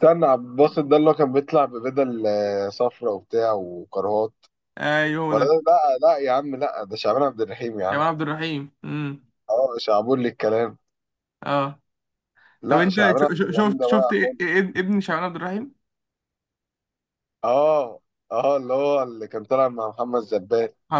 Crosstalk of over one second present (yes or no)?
yes